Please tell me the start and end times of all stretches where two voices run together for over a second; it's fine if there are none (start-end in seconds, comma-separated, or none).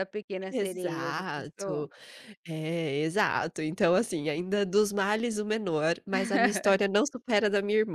0.5-1.9